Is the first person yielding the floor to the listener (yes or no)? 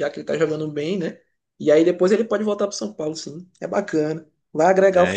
yes